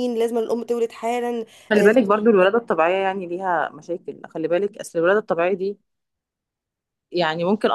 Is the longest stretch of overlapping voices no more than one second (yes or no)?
yes